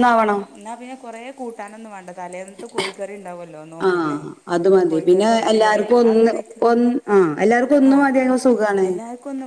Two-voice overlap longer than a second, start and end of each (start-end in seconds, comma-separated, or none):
none